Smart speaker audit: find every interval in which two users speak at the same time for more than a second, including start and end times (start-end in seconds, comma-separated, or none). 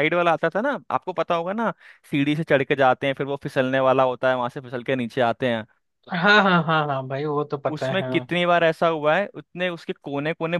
none